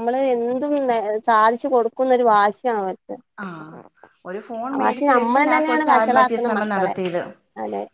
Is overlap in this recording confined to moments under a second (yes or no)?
no